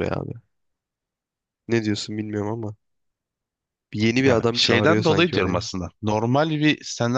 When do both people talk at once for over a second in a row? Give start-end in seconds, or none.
4.2-5.7